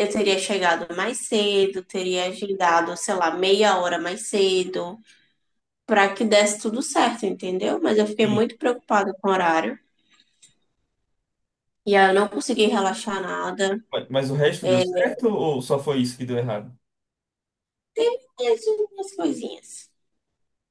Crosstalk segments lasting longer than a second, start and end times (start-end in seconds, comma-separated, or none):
none